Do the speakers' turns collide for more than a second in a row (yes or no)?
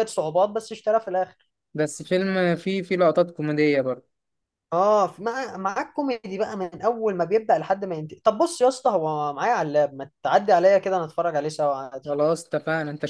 no